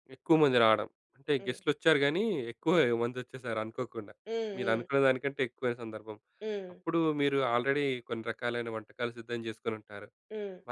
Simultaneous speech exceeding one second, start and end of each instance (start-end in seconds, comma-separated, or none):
none